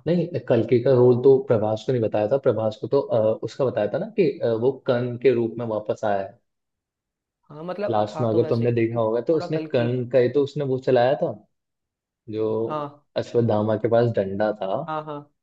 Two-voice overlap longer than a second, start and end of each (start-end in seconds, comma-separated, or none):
7.9-9.9